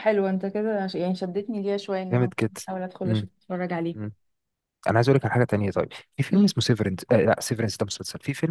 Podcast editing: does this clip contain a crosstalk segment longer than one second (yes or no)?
no